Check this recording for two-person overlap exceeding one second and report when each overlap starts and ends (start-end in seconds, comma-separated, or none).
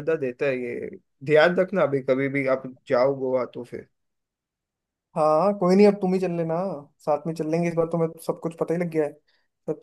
none